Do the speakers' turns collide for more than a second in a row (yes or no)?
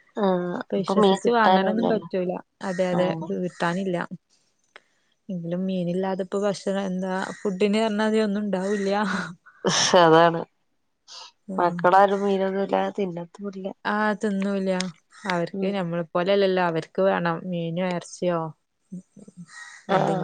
yes